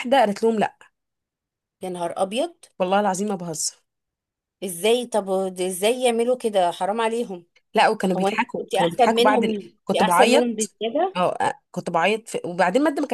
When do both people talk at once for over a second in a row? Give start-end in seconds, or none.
8.2-10.8